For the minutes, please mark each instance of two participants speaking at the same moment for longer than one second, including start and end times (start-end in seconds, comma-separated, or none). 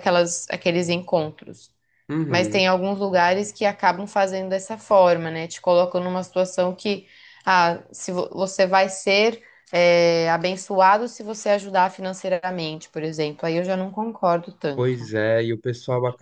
none